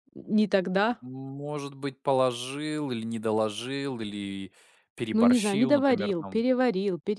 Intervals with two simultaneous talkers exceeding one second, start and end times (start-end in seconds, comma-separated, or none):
5.1-6.4